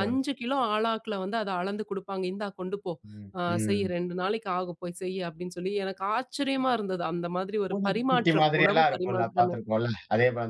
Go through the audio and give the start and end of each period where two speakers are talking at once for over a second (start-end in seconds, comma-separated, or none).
7.7-9.6